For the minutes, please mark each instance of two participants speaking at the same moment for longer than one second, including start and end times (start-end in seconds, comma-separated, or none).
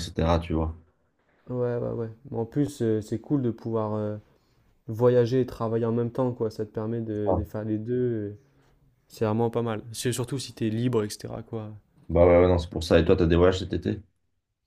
none